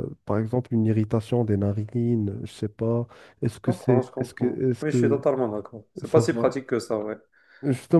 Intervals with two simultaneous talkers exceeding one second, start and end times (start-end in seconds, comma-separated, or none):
3.6-5.2